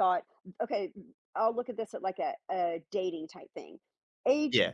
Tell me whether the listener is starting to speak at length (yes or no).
no